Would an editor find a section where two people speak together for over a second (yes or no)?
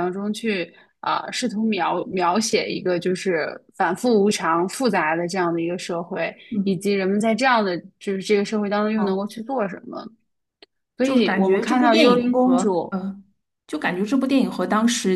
yes